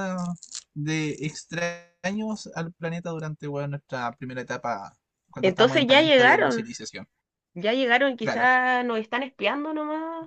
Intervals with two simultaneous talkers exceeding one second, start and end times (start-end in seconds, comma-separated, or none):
5.4-6.7